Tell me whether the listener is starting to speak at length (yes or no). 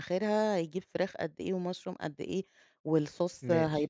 no